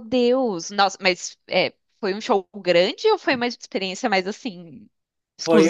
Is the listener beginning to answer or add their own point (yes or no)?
yes